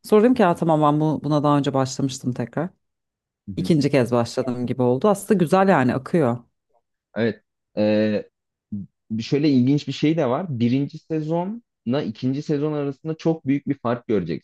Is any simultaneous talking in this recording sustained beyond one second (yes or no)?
no